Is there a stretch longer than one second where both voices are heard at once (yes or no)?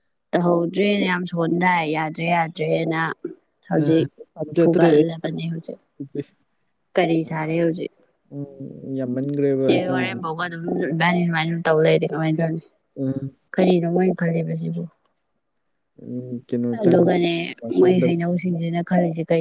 no